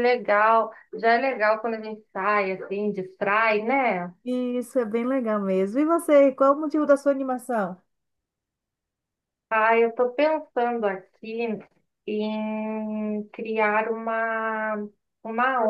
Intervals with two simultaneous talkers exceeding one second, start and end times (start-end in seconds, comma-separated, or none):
none